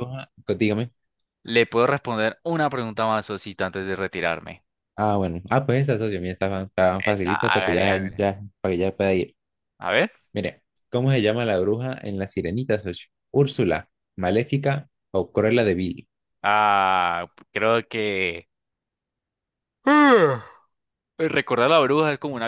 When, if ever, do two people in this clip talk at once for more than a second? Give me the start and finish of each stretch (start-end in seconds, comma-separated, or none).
7.0-8.2